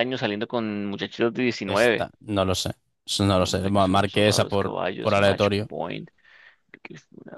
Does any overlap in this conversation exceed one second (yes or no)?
yes